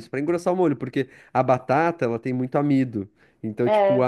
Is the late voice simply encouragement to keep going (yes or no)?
yes